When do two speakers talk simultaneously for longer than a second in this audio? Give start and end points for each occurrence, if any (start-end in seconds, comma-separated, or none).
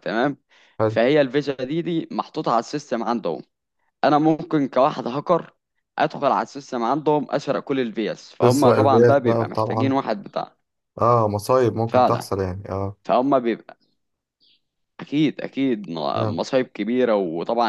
8.4-10.0